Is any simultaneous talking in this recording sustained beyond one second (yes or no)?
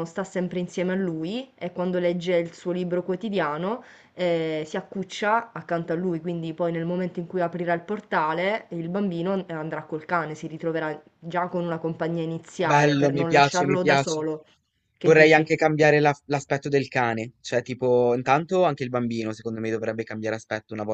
yes